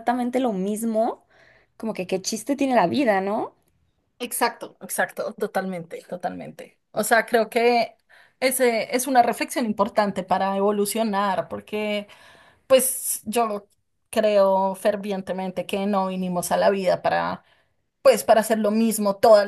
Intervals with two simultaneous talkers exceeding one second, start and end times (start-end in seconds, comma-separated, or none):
none